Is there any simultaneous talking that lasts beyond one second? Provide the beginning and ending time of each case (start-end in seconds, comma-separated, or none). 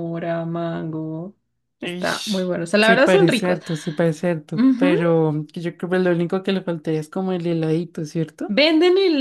1.8-3.6